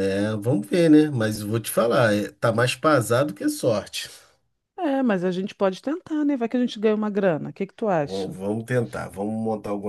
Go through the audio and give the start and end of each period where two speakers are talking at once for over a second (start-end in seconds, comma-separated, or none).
none